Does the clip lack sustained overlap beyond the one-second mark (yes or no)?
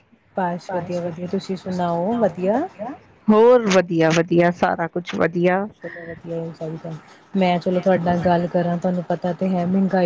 no